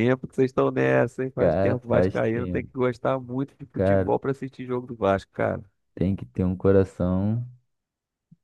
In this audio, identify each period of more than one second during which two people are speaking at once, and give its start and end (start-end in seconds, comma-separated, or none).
1.4-2.7